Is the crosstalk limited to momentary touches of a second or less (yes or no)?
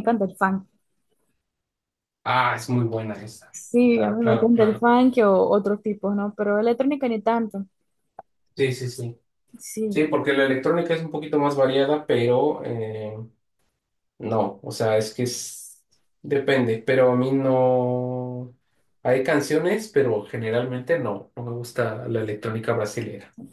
no